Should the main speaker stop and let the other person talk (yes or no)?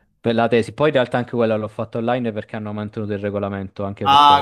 yes